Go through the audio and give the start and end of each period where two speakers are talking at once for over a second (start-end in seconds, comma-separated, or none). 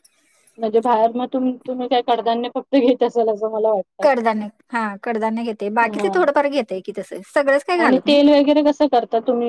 none